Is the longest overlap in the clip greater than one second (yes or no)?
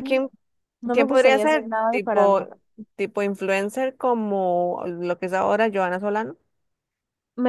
yes